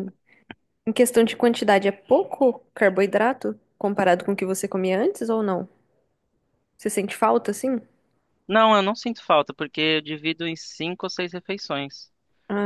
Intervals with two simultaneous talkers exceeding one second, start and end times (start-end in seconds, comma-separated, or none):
none